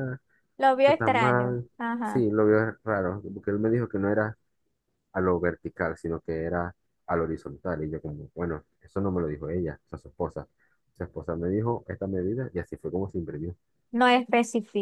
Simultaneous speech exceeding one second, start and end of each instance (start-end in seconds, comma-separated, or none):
0.8-2.3